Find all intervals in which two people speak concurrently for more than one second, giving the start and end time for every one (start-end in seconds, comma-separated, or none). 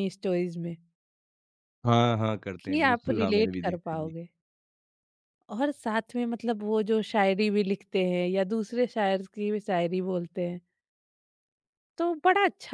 2.6-4.1